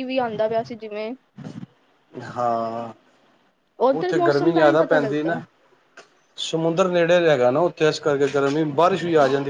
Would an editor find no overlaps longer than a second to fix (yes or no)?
no